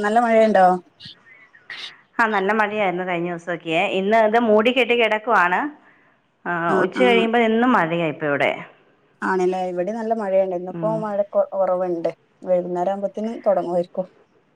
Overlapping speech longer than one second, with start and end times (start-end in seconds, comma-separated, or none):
none